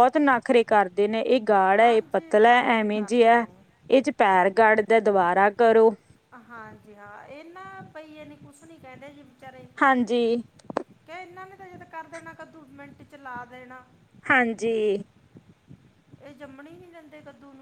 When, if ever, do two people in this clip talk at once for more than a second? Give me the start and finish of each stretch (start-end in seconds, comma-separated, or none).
1.8-3.4